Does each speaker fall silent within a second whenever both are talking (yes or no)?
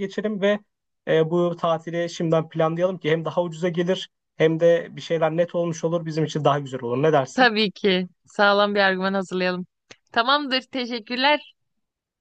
yes